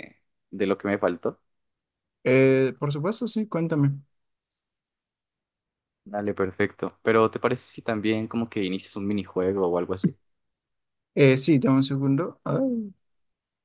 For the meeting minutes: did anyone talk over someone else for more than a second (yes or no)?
no